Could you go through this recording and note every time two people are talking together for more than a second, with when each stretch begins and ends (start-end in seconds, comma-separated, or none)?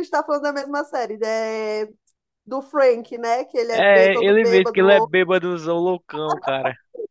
3.7-5.1